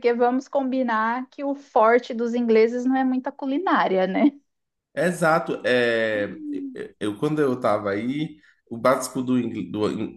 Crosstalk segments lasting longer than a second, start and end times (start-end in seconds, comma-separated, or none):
none